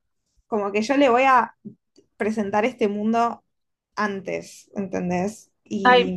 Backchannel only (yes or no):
no